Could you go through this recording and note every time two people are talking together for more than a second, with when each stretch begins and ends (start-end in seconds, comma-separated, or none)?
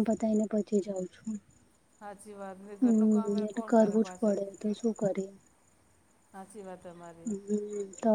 2.8-4.4